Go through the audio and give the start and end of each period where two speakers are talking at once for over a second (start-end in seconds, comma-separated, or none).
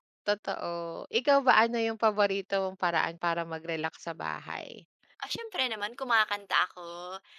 none